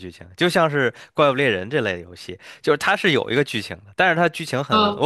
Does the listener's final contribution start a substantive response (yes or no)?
no